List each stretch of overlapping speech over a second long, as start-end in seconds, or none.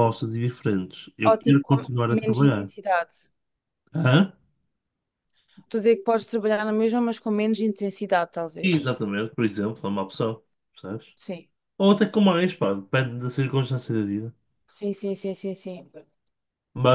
1.2-2.7